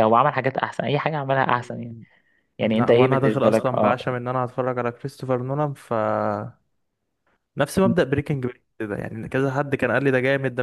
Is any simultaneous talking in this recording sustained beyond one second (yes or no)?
yes